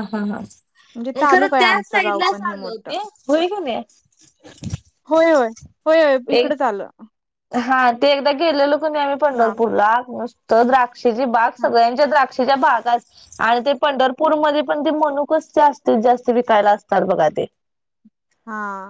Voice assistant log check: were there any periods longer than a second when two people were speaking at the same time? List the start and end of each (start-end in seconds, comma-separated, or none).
1.3-2.9